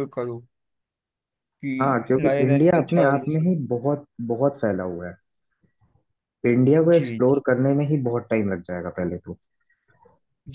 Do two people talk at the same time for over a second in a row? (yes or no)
yes